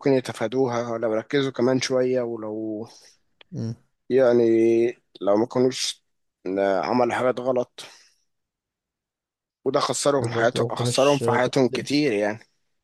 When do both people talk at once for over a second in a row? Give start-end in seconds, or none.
10.2-11.9